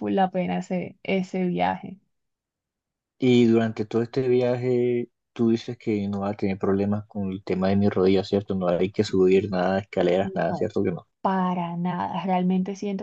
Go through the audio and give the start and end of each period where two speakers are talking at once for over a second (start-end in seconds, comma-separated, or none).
none